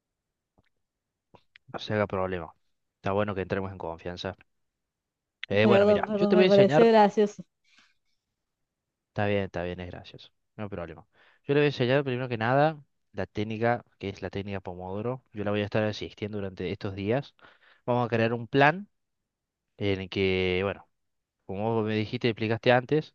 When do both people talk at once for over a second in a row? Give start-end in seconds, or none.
5.6-6.9